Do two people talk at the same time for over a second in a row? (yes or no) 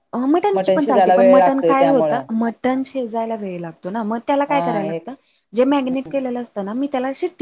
yes